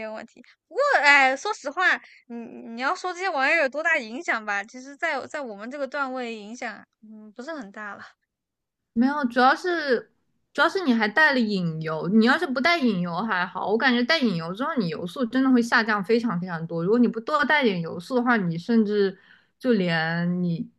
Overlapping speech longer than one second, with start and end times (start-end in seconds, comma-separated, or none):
none